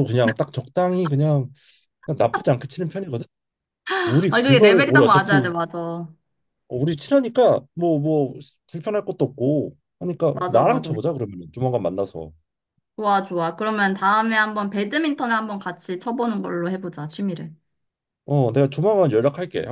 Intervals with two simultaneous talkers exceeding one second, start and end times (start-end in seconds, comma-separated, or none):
4.3-5.5